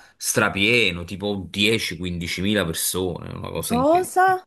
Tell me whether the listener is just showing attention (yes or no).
yes